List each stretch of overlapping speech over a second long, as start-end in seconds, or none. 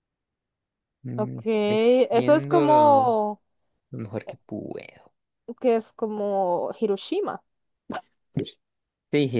1.2-3.2